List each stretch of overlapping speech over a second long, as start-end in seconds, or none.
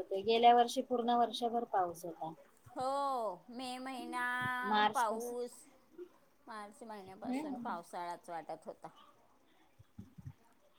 none